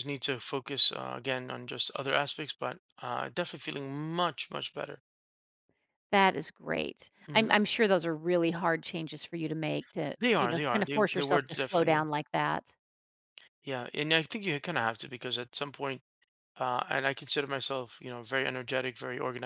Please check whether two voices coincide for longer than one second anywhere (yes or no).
yes